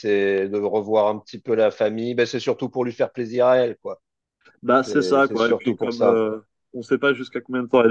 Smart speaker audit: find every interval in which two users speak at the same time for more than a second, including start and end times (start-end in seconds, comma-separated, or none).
4.9-6.2